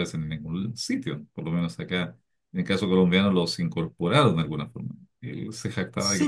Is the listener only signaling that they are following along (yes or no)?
no